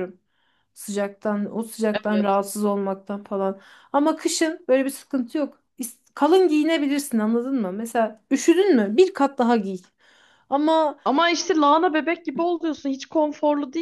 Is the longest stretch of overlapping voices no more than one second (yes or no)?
yes